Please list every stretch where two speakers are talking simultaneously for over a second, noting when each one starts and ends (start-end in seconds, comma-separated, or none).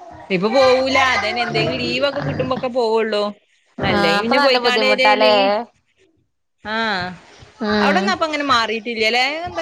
4.0-5.3